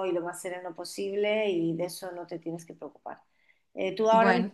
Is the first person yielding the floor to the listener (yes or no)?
no